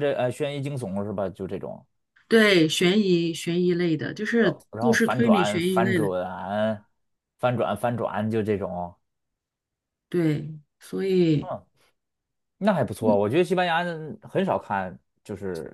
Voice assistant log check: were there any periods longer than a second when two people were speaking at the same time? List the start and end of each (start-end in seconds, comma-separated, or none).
4.4-6.1